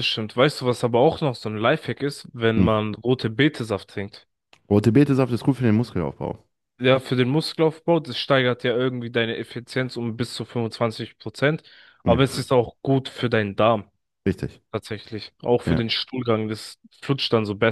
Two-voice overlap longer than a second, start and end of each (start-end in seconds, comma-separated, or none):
none